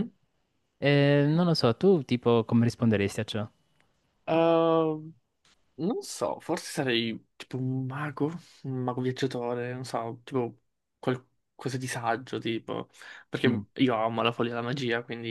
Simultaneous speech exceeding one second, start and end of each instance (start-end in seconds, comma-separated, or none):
none